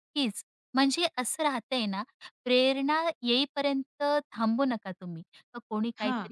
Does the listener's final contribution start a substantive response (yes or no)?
no